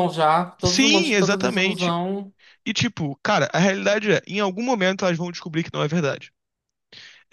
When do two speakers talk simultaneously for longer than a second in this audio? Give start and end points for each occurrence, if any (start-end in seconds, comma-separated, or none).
0.7-1.9